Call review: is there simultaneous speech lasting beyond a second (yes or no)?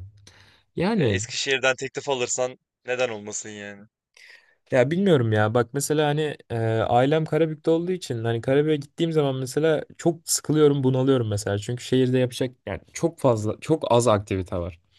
no